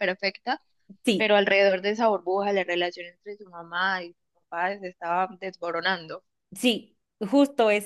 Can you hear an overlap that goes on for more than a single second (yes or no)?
no